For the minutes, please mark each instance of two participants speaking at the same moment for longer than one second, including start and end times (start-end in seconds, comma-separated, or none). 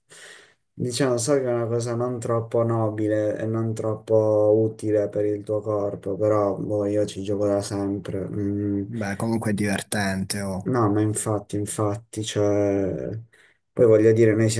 none